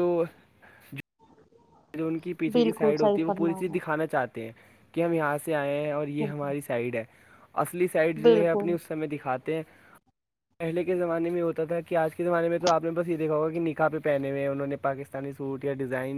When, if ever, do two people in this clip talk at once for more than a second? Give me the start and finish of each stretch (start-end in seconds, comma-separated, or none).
2.5-3.9